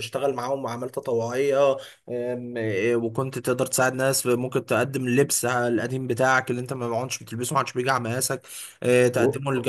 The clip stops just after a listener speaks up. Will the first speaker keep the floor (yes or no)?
yes